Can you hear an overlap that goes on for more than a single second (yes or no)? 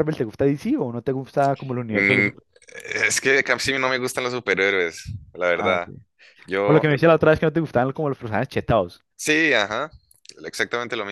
no